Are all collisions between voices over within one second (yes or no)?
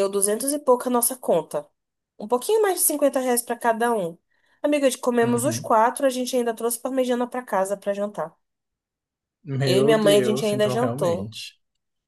no